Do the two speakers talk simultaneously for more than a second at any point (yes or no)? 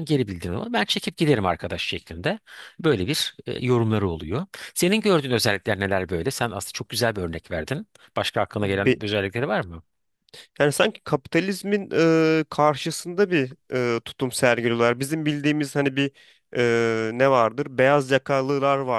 no